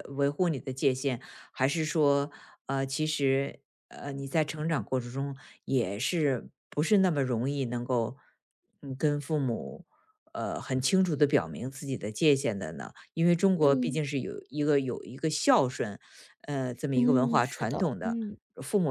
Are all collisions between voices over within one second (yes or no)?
no